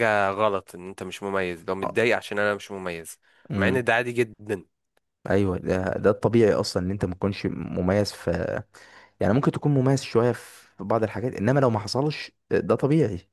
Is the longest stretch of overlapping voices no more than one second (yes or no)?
yes